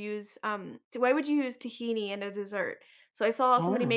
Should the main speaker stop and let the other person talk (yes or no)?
no